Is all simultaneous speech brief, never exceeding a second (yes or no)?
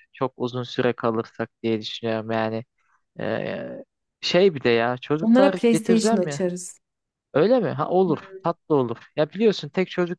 no